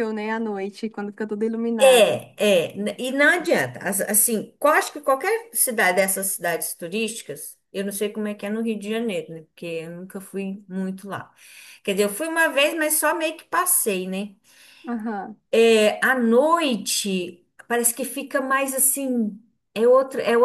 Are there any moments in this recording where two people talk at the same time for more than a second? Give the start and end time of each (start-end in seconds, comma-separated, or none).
none